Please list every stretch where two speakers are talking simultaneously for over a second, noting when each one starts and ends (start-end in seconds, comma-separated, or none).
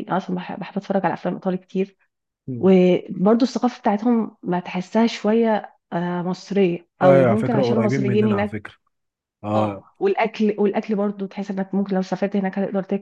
7.0-8.6